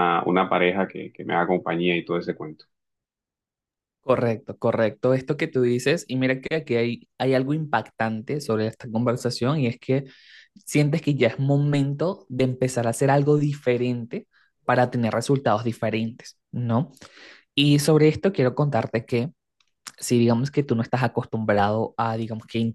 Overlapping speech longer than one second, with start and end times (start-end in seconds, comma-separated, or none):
none